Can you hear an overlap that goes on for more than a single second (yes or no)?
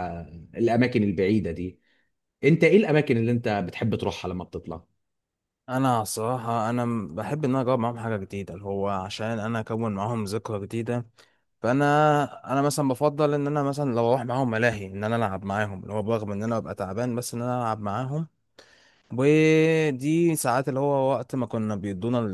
no